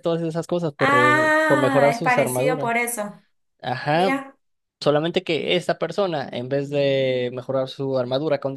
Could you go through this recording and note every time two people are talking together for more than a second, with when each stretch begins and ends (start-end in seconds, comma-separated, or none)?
0.8-2.7